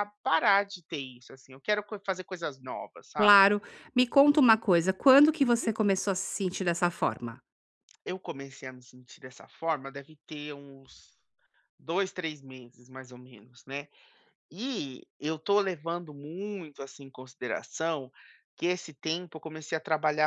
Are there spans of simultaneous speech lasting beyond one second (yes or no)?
no